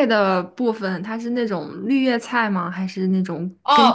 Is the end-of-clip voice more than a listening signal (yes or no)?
yes